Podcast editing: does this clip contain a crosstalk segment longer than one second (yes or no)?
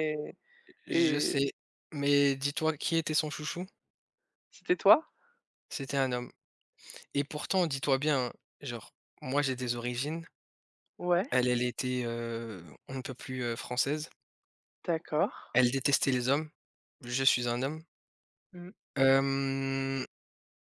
no